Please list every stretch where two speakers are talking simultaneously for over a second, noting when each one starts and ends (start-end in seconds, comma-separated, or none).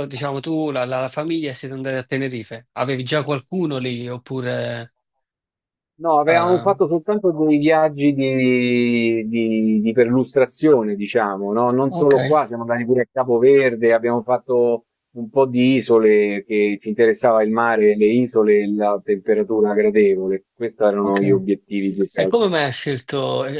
none